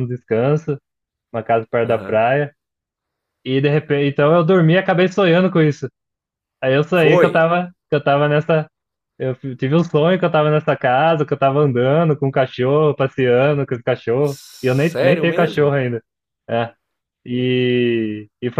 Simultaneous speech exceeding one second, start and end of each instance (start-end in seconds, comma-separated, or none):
14.2-15.8